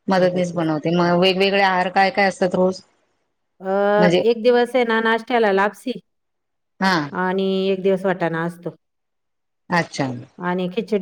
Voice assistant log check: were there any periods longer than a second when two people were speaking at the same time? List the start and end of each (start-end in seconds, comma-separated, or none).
none